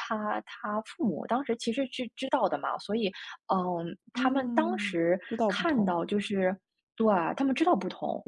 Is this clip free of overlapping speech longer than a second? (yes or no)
no